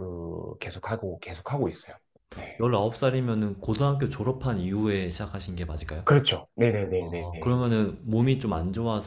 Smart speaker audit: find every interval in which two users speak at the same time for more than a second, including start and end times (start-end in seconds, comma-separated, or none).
none